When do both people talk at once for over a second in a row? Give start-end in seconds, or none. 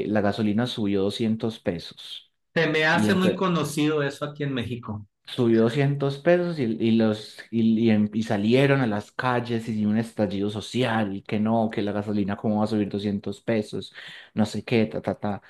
none